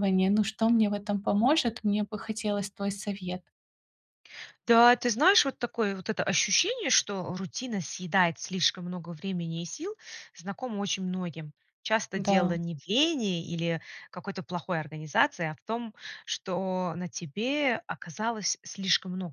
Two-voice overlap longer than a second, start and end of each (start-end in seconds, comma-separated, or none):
none